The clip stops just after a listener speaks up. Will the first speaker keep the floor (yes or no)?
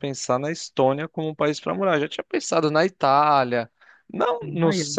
yes